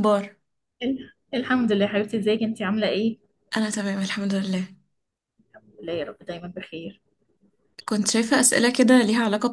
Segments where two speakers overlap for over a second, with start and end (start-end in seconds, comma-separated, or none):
none